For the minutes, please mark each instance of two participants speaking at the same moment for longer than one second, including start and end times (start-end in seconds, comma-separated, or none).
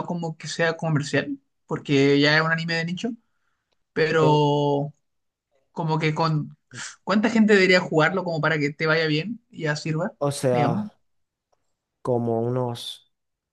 none